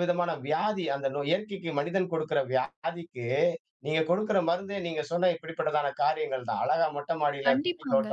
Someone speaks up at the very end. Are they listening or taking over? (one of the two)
listening